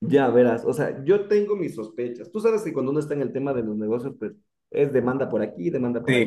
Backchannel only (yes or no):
no